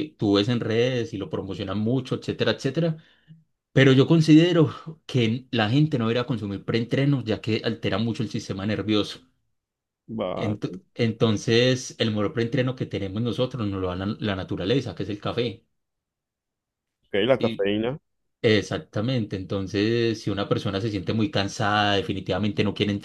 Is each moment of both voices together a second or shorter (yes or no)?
yes